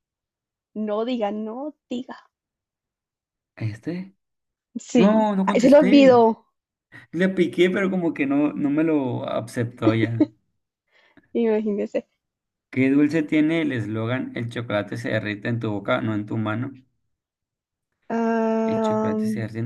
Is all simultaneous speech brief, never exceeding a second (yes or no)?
no